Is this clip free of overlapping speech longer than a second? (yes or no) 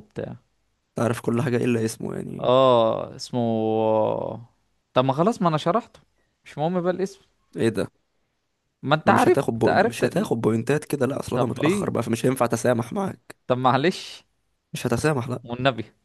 no